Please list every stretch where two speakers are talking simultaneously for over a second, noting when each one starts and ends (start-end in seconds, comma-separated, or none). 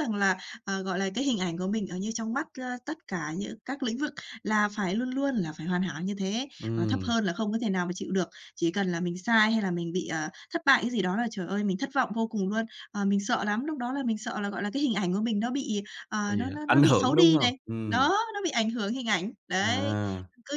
16.3-18.1